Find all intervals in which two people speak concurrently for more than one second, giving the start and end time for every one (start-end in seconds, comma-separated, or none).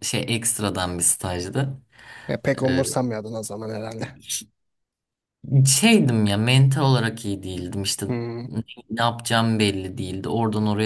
none